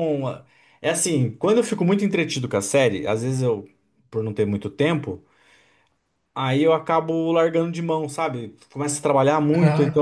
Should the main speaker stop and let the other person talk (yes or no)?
no